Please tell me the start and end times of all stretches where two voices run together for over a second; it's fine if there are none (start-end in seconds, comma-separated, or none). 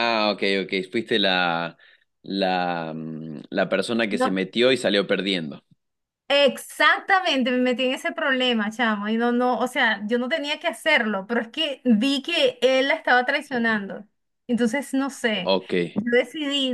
none